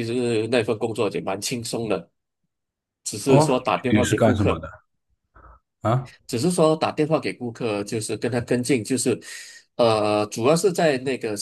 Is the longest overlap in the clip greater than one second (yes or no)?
yes